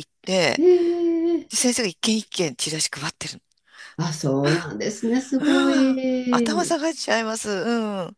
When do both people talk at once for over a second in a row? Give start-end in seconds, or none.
5.4-6.7